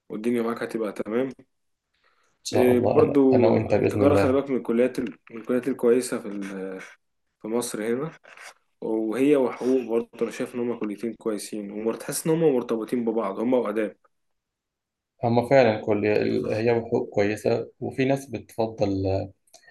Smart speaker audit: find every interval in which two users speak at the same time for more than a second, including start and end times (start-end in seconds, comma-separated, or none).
2.5-4.4